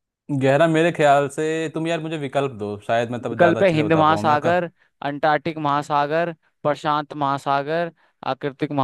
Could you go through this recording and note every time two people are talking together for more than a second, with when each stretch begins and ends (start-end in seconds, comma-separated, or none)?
3.3-4.7